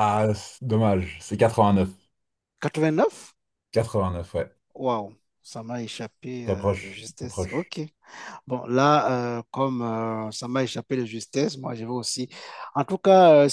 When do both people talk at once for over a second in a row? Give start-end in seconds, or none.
6.4-7.7